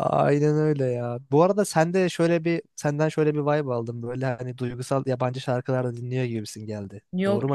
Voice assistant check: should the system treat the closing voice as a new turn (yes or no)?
yes